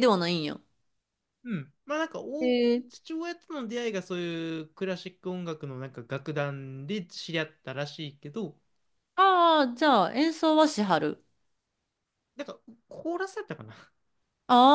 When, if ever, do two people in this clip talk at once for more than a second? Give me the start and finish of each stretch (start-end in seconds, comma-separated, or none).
none